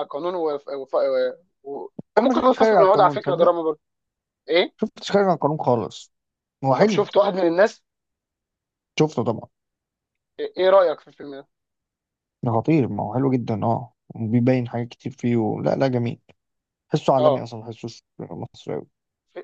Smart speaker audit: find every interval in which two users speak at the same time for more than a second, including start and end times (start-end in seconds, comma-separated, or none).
2.2-3.5